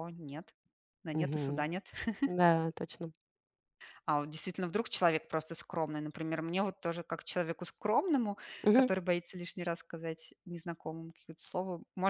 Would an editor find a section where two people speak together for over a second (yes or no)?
no